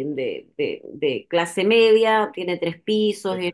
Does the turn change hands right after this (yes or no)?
no